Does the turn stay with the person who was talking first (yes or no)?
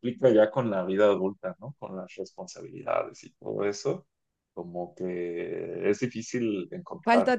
yes